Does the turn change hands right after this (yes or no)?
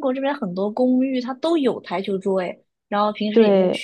no